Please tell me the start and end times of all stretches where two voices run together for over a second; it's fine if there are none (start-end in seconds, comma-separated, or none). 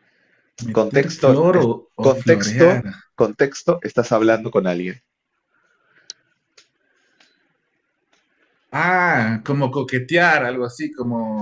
0.8-2.8